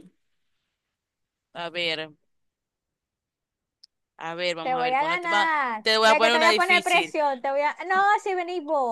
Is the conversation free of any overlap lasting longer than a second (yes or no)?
no